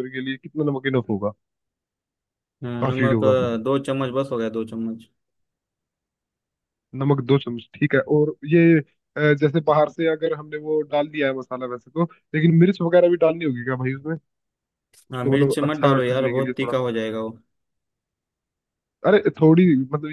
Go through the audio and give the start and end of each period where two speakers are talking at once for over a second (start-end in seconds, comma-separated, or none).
15.1-16.9